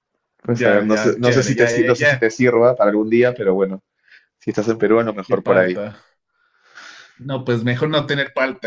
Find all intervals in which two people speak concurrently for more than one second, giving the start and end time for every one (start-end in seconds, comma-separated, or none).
0.6-2.3